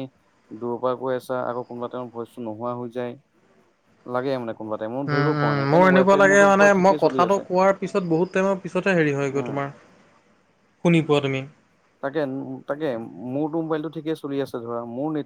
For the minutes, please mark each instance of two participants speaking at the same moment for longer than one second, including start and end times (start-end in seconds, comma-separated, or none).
5.1-7.4